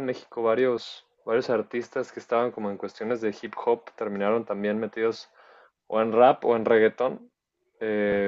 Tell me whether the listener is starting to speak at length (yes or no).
no